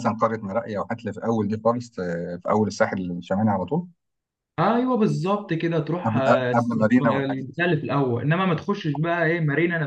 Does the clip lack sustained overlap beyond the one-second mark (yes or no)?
no